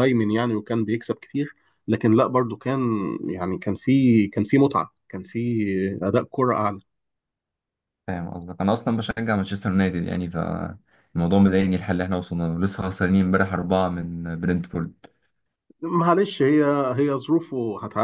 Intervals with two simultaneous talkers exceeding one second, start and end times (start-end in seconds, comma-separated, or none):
none